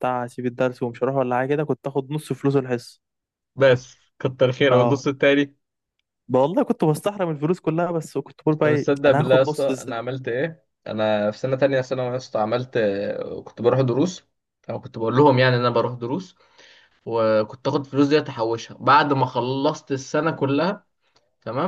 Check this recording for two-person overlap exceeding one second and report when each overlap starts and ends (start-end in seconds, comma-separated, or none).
8.6-10.0